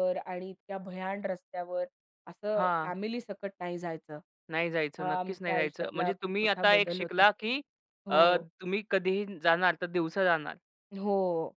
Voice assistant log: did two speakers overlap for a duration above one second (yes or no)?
yes